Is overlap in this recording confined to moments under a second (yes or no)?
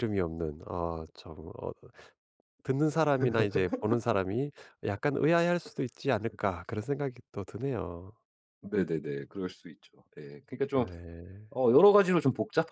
yes